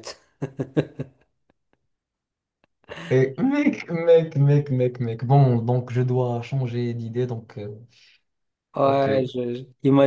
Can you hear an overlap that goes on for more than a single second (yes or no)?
no